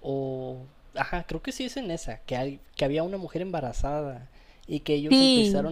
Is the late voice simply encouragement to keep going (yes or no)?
yes